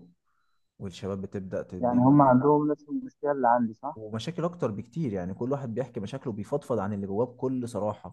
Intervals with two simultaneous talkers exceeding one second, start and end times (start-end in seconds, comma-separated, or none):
none